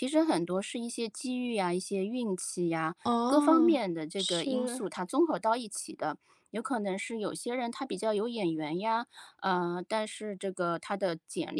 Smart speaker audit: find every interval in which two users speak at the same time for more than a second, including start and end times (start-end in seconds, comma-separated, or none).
3.0-4.8